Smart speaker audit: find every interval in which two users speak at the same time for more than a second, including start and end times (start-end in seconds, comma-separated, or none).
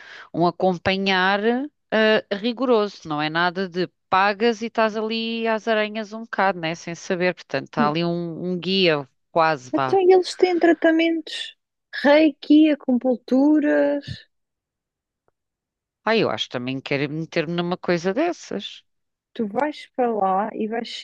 none